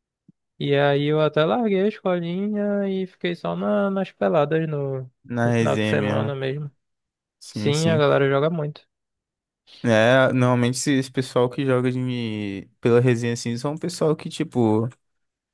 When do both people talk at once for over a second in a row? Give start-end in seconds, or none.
5.2-6.5